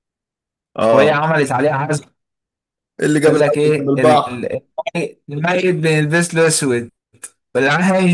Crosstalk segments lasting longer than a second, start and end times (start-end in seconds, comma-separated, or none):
3.3-4.5